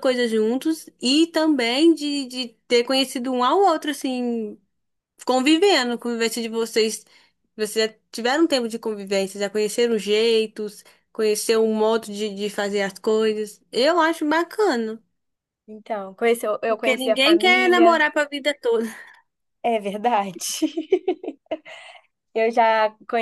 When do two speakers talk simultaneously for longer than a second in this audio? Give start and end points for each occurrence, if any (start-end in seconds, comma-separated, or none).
16.7-18.0